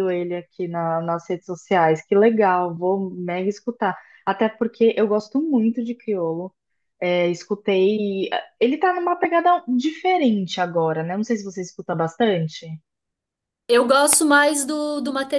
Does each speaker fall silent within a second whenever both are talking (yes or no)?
yes